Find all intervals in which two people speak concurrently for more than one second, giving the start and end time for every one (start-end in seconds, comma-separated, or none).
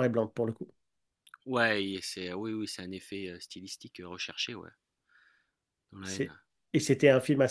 none